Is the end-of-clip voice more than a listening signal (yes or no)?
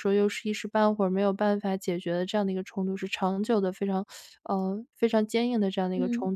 no